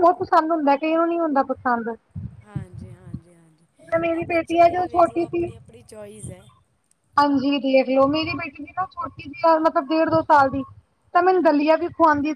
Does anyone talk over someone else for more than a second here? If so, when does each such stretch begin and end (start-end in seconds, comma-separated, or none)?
4.2-5.5